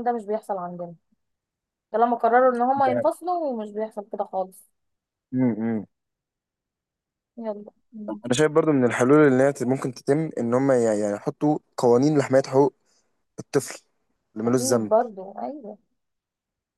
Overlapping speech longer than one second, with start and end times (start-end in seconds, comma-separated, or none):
none